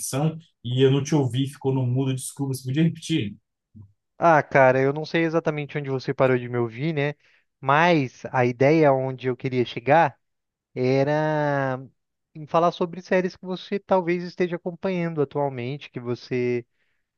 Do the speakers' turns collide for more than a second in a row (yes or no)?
no